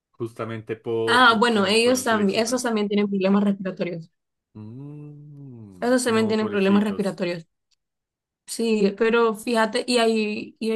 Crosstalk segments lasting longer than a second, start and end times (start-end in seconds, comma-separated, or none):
1.0-2.8, 5.8-7.2